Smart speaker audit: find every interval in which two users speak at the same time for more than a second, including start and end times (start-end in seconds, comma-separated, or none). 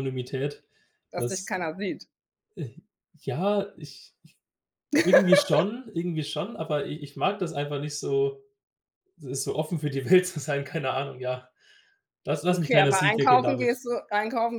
12.5-13.8